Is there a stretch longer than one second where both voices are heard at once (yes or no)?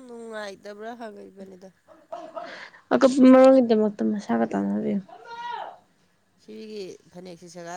no